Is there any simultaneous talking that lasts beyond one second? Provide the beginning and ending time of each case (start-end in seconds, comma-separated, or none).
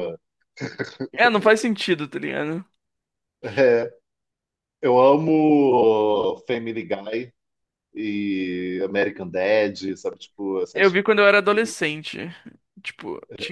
none